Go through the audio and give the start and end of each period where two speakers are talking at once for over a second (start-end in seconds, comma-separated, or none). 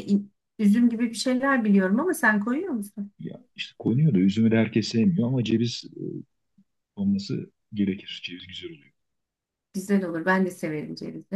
none